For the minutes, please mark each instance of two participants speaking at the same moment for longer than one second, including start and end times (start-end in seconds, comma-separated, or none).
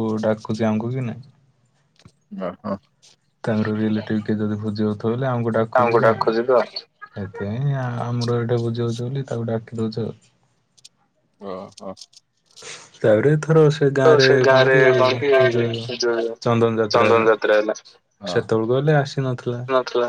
18.3-19.6